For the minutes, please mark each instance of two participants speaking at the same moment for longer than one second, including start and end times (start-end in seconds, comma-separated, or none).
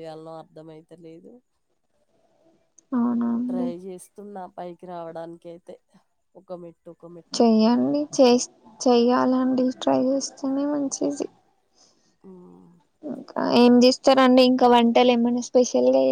none